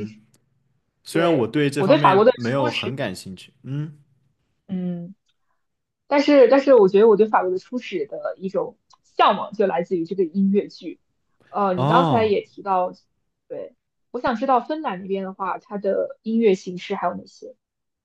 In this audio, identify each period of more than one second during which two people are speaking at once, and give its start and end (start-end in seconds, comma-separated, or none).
1.1-3.0